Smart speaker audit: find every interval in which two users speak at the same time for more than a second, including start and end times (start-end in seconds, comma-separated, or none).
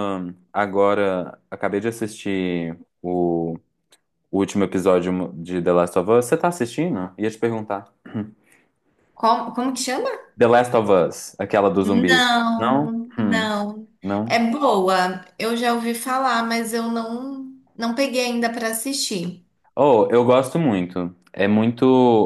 11.8-13.6